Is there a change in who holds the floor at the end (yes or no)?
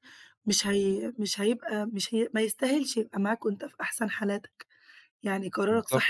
yes